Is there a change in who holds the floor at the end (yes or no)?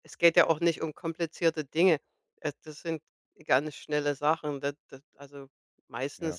no